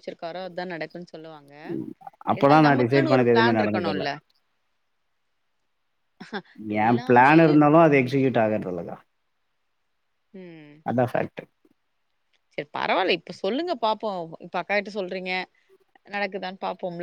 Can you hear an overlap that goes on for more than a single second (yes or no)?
yes